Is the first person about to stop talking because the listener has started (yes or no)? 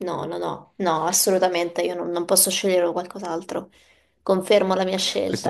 yes